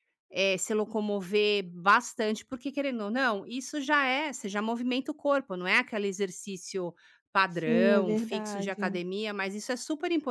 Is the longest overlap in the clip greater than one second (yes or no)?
yes